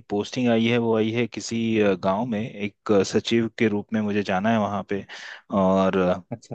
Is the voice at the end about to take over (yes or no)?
no